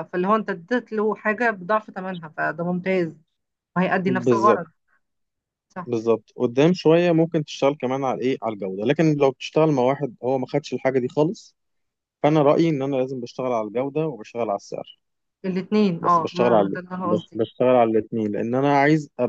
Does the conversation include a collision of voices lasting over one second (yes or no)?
yes